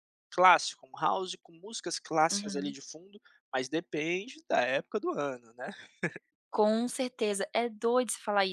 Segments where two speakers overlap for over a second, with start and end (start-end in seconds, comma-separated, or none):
none